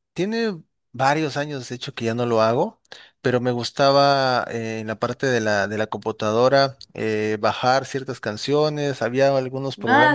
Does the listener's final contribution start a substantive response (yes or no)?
no